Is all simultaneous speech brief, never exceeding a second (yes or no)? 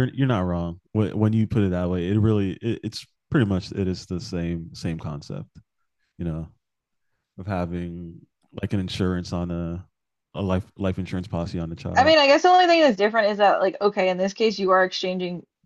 yes